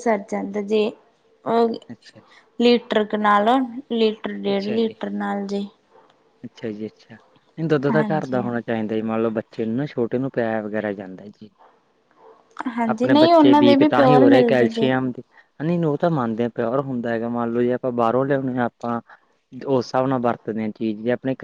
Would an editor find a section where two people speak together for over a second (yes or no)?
yes